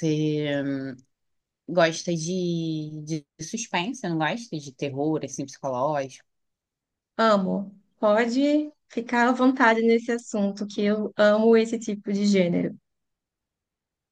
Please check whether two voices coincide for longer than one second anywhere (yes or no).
no